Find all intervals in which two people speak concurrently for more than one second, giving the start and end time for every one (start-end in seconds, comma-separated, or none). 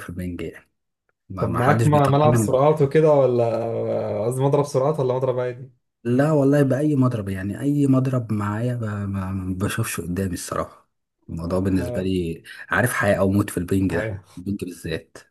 1.4-3.0